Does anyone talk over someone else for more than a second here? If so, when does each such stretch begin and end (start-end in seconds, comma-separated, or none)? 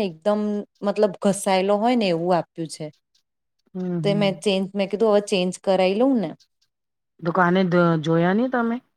none